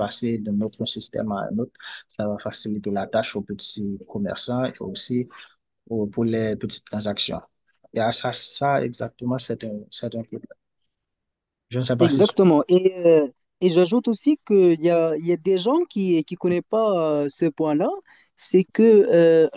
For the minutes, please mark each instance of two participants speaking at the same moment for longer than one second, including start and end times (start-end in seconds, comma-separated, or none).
none